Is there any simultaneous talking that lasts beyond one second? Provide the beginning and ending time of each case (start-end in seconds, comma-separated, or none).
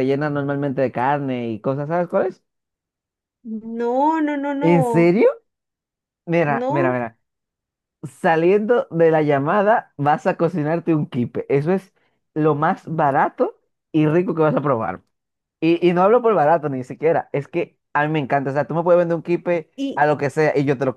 none